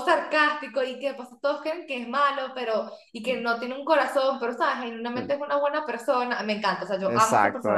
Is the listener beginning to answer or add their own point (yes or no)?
yes